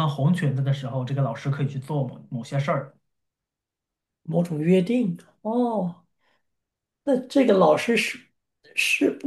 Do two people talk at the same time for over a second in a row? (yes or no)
no